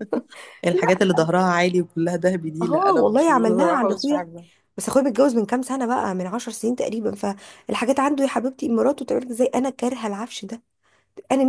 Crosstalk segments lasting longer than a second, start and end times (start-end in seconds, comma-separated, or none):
2.6-4.3